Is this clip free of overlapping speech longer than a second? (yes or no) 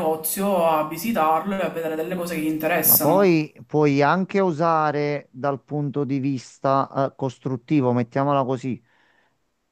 yes